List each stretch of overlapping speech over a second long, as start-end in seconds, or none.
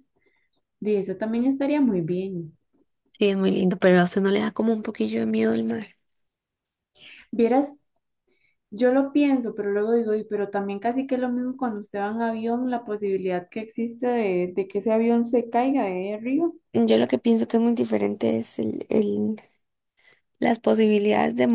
none